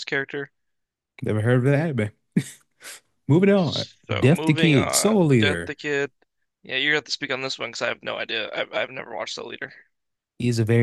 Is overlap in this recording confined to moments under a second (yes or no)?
no